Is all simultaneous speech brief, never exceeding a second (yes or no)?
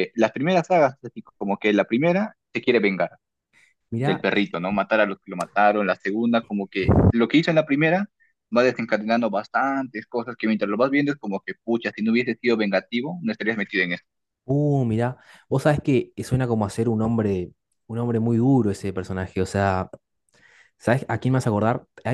yes